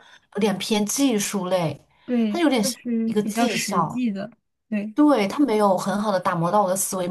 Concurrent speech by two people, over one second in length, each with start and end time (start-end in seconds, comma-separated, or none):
2.3-4.0